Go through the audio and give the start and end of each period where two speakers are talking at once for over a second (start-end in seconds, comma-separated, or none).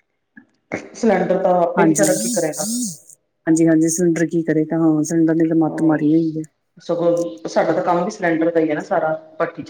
none